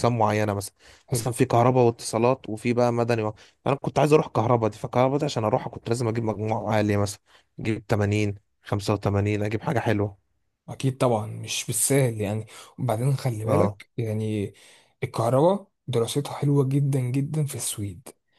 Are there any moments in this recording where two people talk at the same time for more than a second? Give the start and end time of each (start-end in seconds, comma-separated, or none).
none